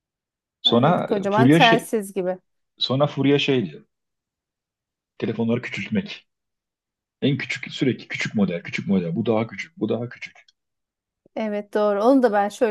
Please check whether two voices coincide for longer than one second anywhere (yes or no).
yes